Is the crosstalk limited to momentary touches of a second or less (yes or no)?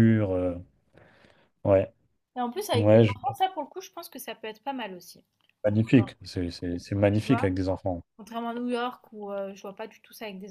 yes